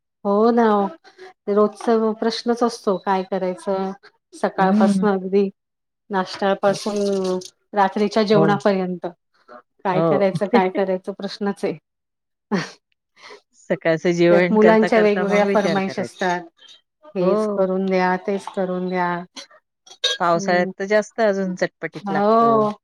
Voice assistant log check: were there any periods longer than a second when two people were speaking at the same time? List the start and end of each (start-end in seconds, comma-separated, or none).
14.3-16.2